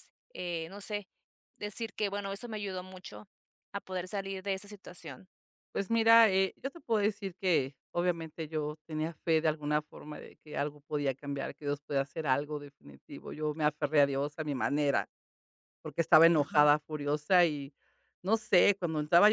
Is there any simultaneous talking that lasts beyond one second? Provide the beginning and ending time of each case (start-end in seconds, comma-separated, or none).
none